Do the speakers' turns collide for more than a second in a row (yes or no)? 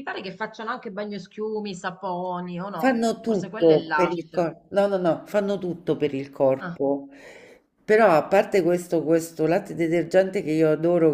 yes